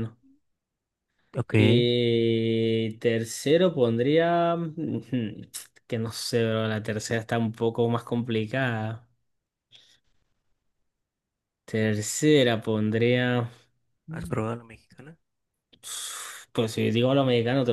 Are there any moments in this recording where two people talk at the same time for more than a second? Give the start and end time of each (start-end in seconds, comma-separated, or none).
none